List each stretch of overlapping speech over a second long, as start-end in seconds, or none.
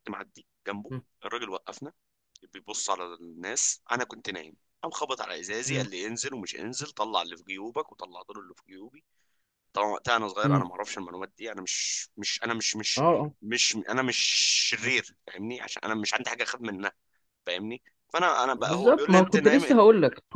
18.6-19.8